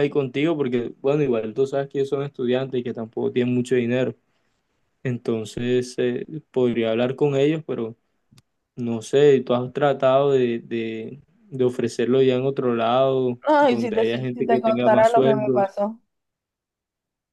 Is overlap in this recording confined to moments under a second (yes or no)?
no